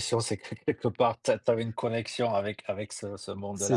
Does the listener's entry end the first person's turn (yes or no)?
yes